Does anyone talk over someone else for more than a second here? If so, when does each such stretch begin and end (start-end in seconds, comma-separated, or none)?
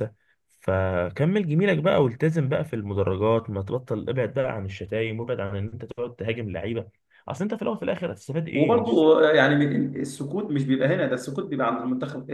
none